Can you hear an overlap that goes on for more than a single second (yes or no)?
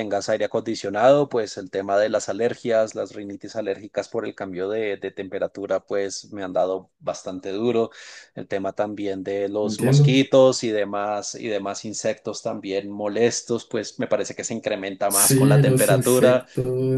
yes